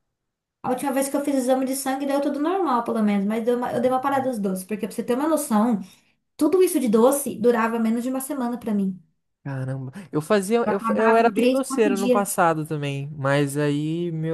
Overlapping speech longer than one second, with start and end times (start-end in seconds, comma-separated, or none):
10.6-12.3